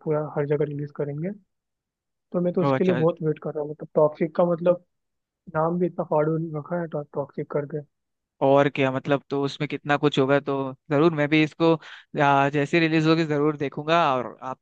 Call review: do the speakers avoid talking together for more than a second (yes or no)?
yes